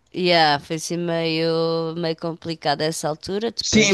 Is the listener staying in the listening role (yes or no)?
no